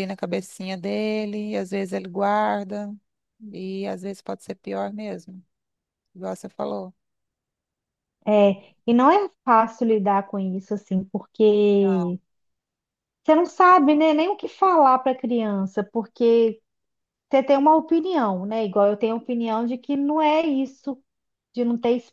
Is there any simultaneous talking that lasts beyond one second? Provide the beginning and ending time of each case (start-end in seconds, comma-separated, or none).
none